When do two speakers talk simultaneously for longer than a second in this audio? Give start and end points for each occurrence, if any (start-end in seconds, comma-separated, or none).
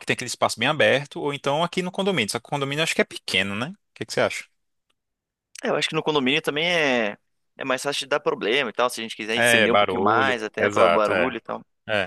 9.3-11.3